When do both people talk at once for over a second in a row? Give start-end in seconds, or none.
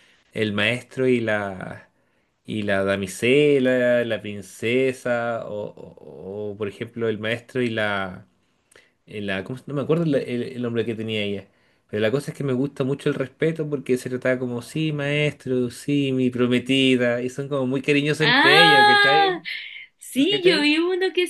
18.2-19.4